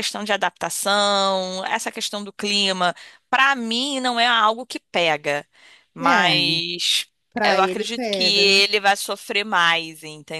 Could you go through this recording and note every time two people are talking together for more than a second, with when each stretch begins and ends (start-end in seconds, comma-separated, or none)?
7.4-8.6